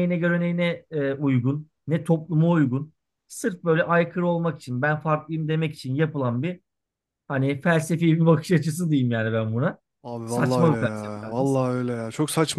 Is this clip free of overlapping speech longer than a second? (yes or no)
no